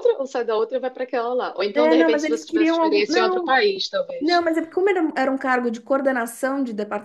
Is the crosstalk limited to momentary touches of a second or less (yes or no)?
no